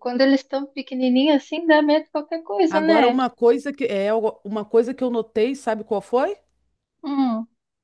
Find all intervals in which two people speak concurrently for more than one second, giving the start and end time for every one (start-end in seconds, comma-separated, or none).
none